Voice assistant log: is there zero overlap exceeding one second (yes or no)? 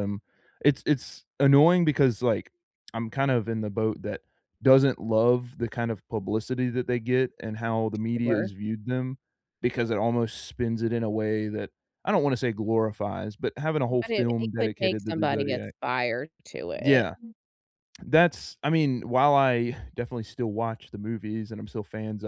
no